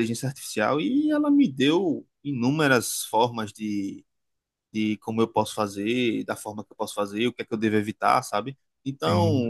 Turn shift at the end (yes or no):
no